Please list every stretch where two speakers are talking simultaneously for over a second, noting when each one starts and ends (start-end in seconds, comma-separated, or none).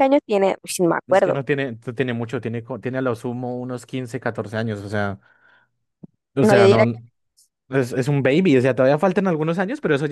none